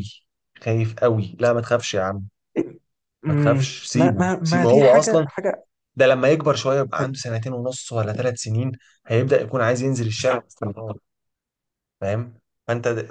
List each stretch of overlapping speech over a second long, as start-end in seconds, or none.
3.3-5.3